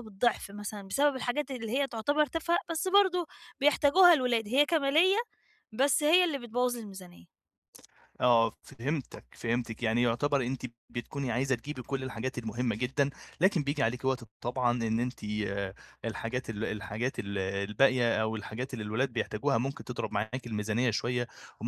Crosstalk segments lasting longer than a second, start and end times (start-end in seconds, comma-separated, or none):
none